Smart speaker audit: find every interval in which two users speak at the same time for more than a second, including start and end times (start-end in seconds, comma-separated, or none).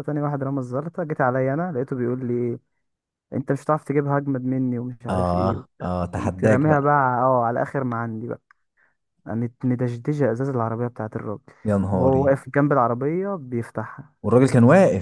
5.1-6.9